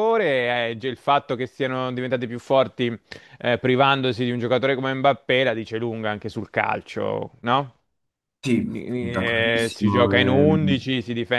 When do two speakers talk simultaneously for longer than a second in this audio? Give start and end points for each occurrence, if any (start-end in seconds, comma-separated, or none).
8.6-10.8